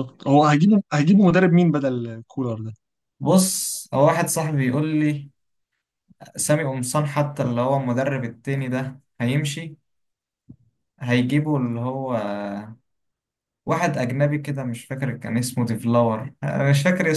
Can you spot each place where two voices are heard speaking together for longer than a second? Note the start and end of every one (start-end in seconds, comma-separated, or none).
none